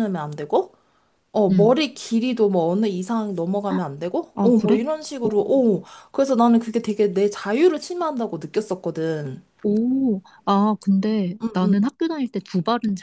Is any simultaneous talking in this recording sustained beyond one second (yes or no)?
no